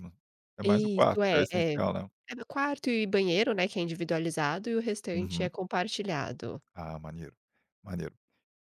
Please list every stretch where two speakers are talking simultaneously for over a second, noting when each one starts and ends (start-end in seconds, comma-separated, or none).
0.6-2.1